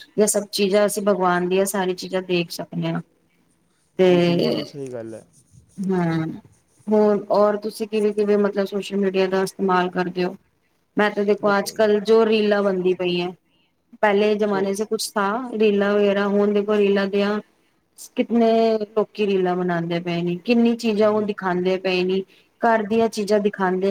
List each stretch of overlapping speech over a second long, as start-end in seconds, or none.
none